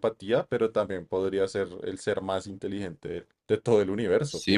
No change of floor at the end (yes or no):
no